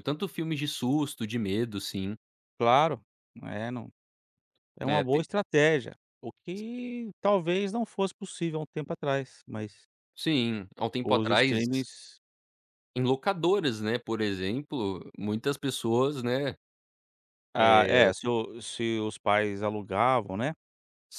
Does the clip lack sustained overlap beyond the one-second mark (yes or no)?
yes